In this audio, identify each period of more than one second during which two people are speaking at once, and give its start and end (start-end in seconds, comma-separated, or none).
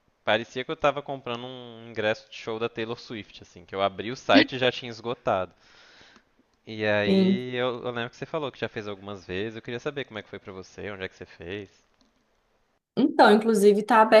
none